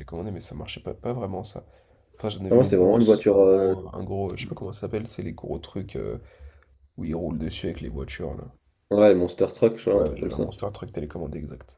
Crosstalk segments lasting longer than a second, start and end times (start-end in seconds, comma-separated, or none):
2.5-3.8